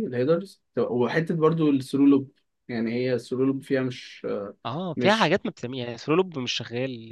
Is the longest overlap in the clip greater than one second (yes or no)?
no